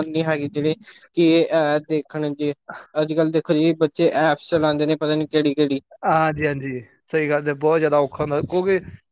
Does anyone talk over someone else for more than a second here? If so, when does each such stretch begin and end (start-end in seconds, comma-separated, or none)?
none